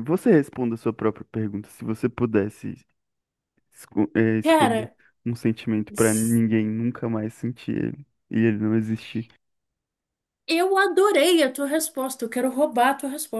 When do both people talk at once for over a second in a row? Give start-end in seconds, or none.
none